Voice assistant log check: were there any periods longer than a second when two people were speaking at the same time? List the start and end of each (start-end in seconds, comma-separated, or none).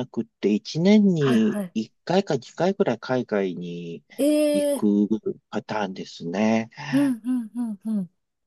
none